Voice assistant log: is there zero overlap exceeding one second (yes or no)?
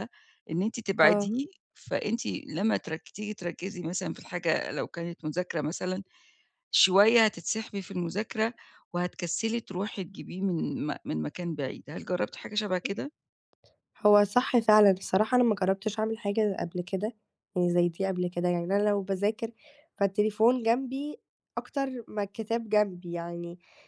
yes